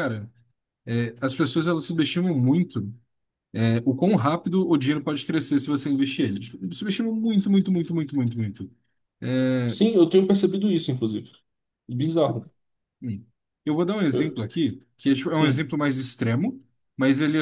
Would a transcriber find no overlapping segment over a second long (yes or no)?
yes